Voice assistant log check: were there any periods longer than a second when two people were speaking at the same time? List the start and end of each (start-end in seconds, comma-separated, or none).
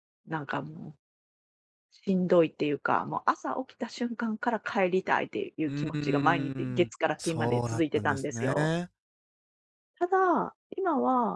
5.6-8.7